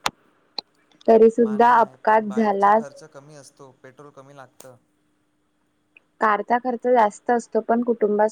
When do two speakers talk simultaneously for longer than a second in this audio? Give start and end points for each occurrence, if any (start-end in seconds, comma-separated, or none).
1.4-2.9